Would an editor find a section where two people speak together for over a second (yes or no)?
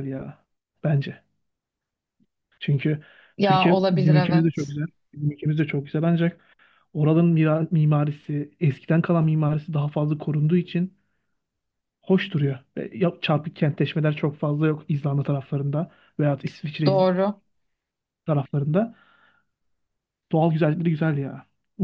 yes